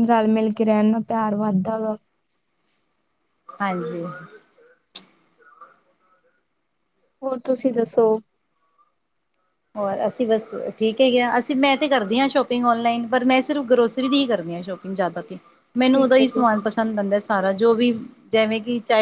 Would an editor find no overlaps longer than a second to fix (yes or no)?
yes